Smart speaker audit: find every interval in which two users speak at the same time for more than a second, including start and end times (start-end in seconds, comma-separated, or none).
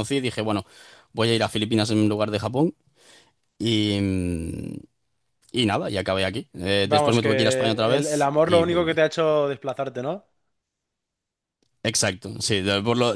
6.8-9.0